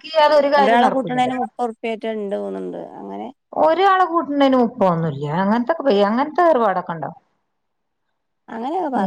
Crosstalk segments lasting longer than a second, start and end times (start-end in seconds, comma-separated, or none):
none